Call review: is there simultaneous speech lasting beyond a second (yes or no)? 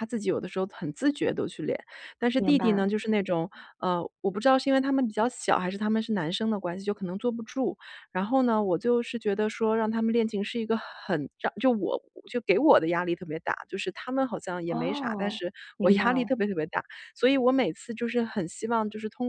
yes